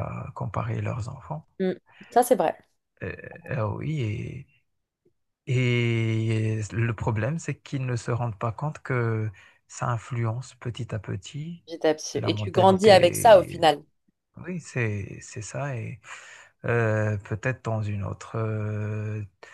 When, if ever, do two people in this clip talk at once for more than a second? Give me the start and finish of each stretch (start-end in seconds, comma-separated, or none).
12.1-13.6